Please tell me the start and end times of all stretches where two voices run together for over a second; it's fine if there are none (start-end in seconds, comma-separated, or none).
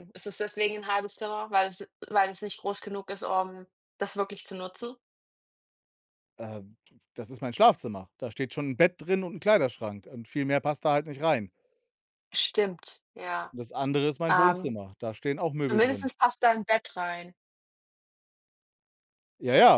none